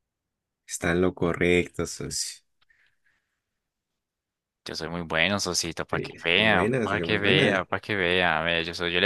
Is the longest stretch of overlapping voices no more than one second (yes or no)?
no